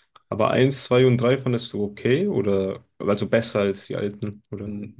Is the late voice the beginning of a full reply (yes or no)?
yes